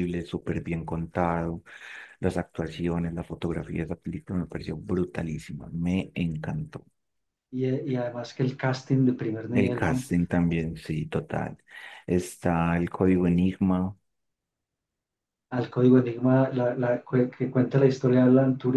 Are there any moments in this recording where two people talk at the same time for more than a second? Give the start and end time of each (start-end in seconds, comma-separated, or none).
none